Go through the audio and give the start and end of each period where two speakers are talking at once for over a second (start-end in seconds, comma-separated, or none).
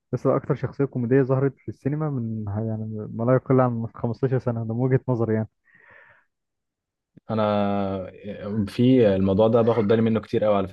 none